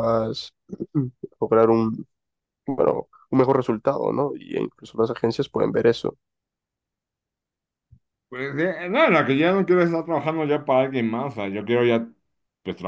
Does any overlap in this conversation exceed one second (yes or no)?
no